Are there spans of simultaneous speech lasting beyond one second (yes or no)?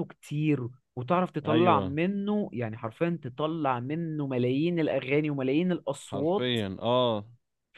no